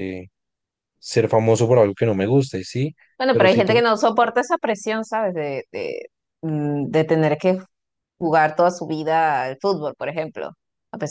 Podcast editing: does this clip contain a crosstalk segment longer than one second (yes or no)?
no